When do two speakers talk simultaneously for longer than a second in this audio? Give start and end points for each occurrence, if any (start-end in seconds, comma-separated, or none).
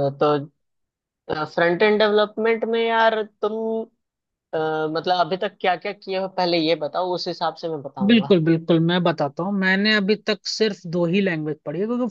none